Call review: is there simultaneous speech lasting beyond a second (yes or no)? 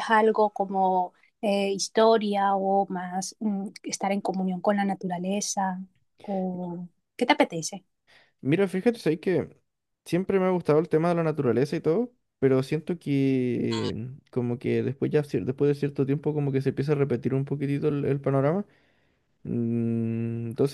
no